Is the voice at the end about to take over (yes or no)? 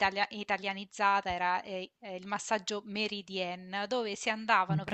no